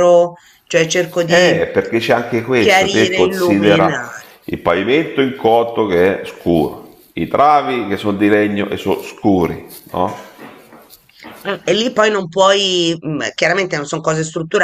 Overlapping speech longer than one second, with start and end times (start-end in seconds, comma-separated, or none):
2.6-4.2